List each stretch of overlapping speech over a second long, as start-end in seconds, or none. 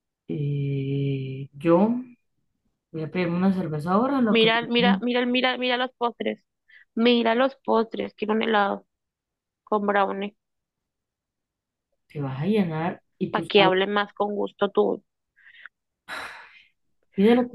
none